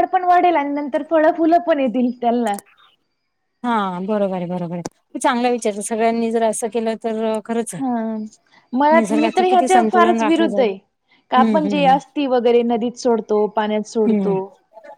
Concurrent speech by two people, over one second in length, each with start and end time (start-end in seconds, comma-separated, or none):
9.0-10.7